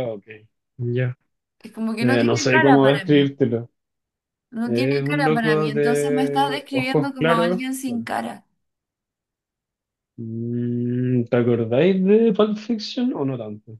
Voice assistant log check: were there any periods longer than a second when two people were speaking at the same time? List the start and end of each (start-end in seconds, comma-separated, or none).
2.0-3.3, 4.7-8.1